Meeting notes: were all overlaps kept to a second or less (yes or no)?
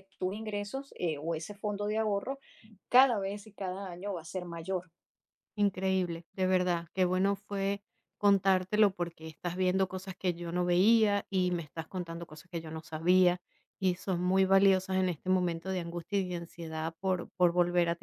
yes